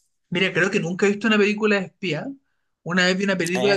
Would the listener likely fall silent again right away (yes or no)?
yes